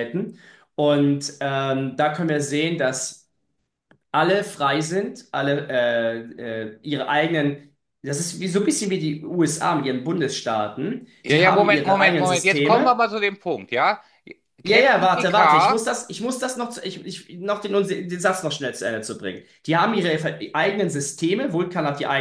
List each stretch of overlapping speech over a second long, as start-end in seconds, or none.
11.2-13.0, 14.6-15.8